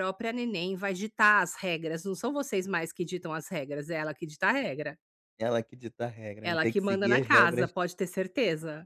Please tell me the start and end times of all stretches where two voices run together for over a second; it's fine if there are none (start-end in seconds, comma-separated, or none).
6.4-7.7